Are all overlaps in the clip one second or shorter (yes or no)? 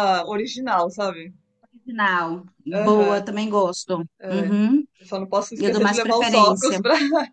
no